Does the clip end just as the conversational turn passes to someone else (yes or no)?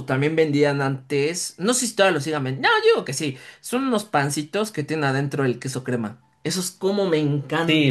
yes